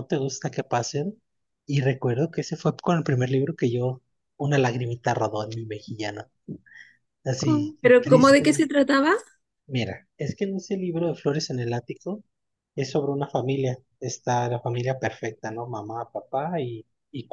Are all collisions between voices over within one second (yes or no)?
no